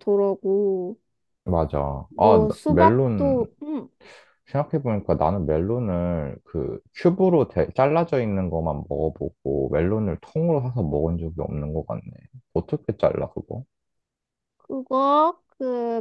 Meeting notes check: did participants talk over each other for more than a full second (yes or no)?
yes